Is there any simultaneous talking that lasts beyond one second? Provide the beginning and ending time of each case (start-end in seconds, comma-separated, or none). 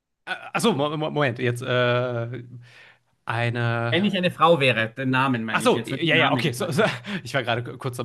5.5-6.8